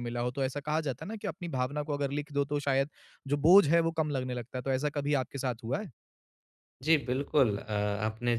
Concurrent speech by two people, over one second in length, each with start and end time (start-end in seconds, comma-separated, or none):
none